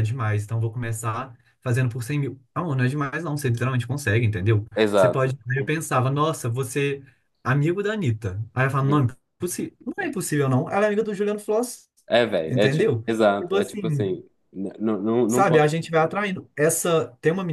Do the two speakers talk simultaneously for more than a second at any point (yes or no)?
yes